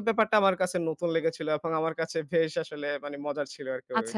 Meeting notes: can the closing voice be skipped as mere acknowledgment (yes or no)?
no